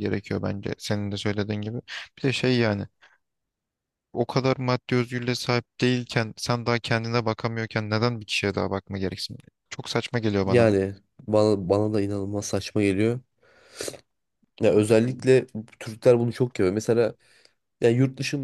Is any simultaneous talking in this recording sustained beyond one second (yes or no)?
no